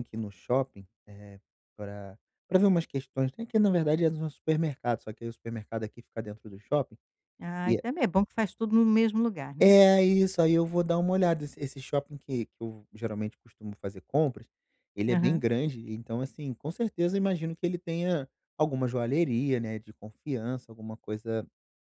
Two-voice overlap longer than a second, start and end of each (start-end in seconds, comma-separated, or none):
none